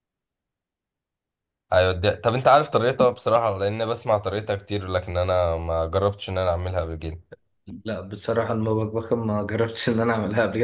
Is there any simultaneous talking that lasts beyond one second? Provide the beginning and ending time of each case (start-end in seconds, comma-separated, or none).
none